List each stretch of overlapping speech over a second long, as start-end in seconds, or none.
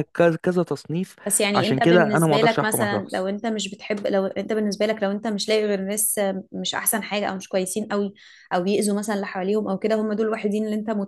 1.5-3.3